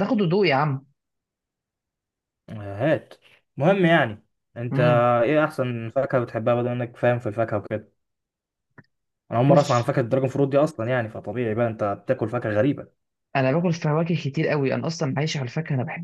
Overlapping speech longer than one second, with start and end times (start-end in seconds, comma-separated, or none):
none